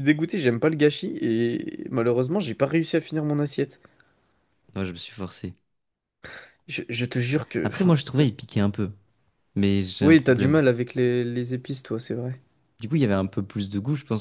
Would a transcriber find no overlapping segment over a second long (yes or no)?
yes